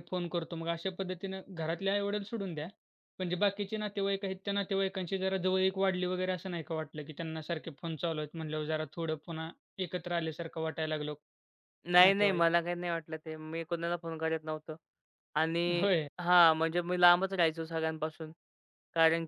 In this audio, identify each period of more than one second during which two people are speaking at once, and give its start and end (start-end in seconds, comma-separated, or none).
none